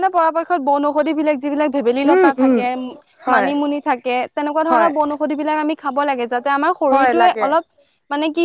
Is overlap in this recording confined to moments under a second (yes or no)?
yes